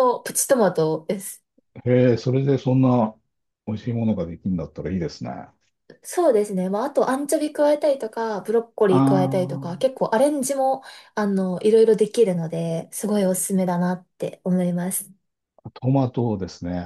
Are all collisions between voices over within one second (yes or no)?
yes